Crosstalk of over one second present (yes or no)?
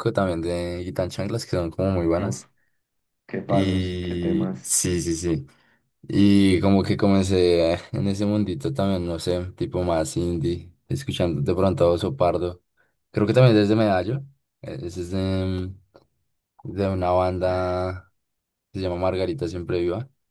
yes